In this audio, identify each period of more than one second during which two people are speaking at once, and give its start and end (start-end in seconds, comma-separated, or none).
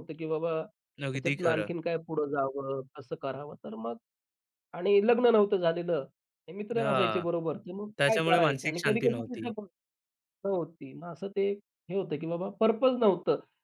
8.0-9.3